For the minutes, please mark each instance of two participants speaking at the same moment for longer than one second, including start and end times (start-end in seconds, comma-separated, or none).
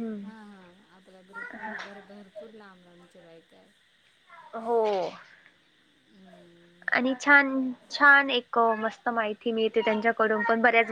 none